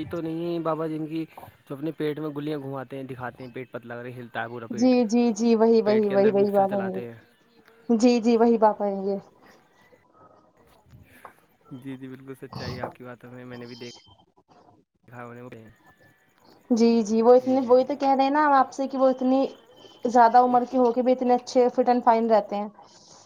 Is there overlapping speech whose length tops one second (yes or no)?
yes